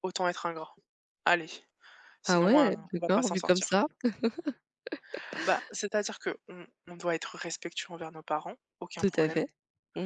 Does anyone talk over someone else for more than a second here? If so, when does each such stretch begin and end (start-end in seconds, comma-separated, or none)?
2.3-3.8